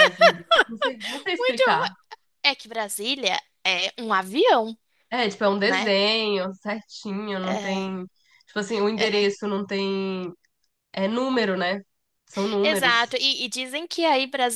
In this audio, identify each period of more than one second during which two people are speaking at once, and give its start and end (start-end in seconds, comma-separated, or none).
none